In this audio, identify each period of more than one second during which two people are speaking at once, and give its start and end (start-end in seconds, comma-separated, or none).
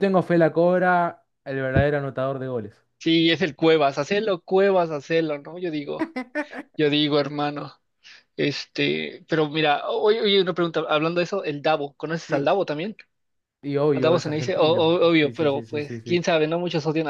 13.9-16.3